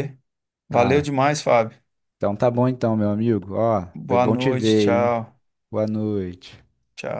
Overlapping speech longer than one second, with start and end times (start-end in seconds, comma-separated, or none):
3.9-5.2